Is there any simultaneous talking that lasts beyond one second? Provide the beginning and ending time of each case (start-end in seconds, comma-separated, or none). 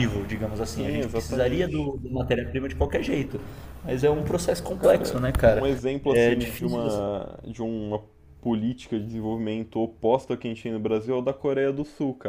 0.6-1.9, 4.8-7.0